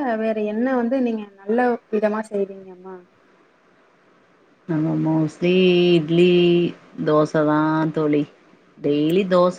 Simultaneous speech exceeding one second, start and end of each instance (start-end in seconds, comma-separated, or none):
none